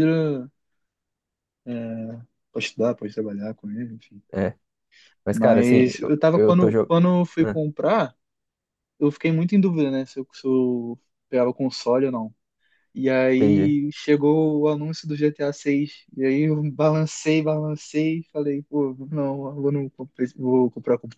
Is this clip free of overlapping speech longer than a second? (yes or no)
no